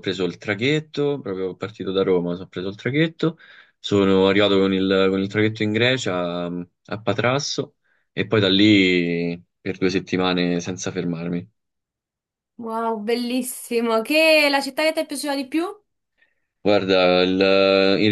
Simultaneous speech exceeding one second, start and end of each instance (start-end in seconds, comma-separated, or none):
none